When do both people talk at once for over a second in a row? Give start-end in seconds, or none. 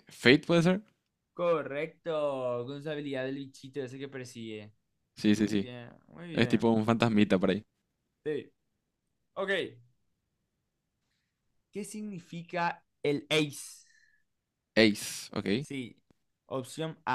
none